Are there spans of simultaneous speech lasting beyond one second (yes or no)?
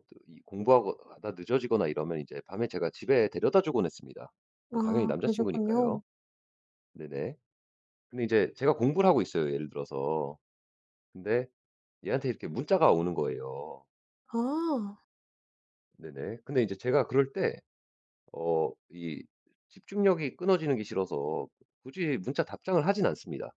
yes